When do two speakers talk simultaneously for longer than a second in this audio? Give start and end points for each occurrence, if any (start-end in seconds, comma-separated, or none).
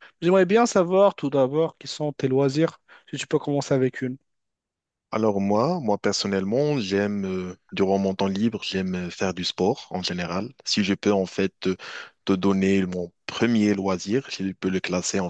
none